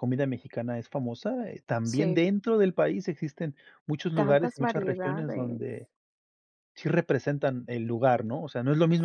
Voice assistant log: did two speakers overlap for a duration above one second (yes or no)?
yes